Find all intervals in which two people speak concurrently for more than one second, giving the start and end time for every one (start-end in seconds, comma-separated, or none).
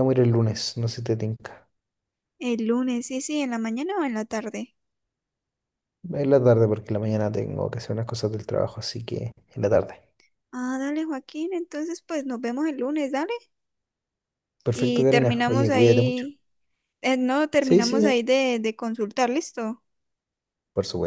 14.7-16.3